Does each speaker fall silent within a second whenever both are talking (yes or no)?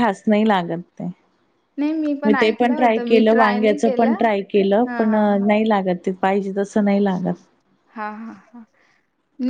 no